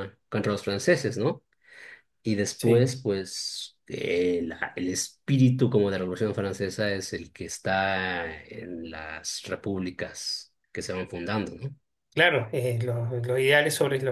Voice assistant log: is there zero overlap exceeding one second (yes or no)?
yes